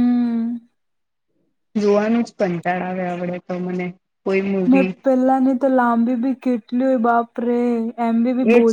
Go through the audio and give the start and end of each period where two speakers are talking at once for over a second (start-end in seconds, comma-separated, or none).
none